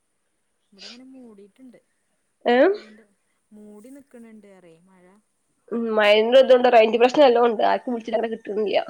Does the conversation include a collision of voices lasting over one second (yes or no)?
no